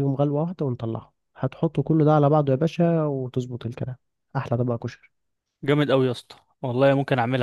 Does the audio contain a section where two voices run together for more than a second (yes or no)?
no